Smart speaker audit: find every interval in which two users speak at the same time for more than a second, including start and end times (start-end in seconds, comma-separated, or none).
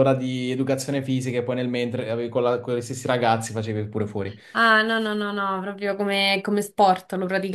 none